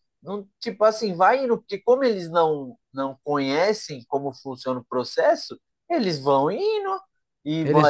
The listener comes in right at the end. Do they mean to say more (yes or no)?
no